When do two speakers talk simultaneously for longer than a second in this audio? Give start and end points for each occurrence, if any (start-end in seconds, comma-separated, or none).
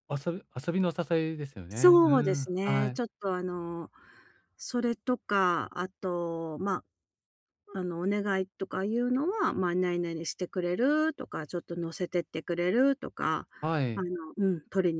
1.7-3.0